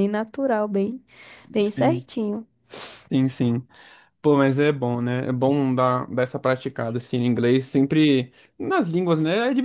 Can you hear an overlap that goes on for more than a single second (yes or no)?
no